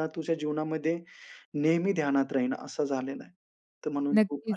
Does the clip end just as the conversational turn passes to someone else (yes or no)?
yes